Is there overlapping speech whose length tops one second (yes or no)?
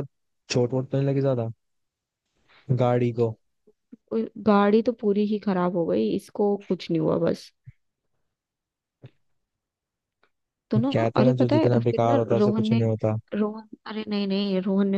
yes